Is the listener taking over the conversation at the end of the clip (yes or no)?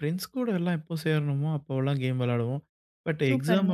no